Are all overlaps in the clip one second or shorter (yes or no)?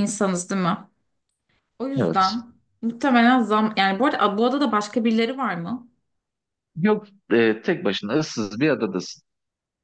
yes